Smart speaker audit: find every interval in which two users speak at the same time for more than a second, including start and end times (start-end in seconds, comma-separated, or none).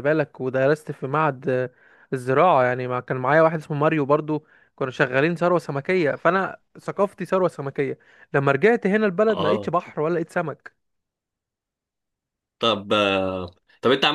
none